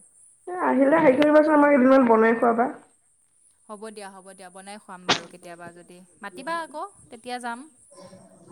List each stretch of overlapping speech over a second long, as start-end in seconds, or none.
none